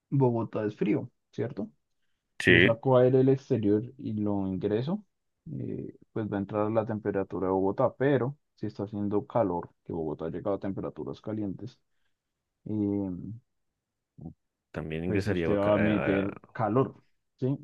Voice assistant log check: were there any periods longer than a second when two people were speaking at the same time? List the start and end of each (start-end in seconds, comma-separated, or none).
15.1-16.6